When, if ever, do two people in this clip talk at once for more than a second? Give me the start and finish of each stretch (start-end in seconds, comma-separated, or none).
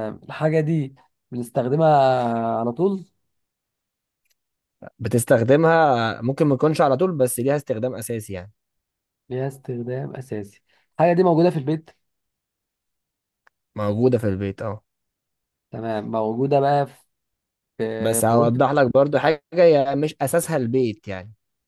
none